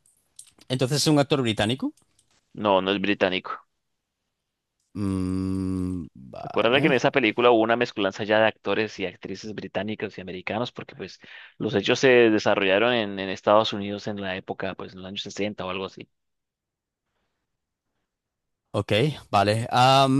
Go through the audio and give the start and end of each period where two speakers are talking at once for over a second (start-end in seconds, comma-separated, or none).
none